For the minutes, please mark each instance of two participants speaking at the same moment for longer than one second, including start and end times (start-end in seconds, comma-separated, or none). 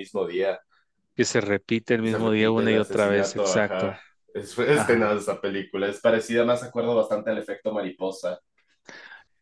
2.0-4.0